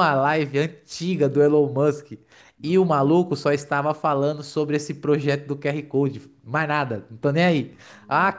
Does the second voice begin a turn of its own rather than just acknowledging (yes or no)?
no